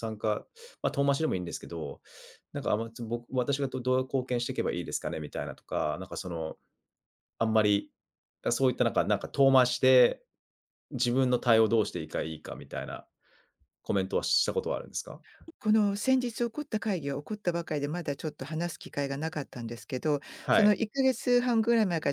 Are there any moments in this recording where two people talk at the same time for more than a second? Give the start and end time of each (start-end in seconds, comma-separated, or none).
none